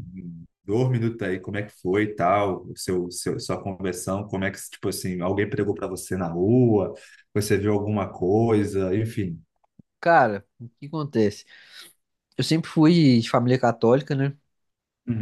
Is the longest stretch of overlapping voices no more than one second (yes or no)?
yes